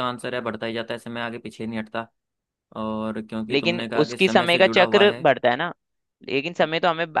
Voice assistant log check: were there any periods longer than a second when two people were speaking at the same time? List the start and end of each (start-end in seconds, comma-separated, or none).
3.5-5.3